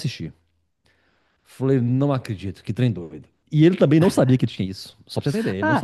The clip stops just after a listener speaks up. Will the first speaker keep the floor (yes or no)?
no